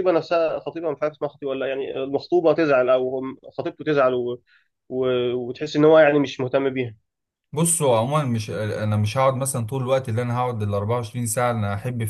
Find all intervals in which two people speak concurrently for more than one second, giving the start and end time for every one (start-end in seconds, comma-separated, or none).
none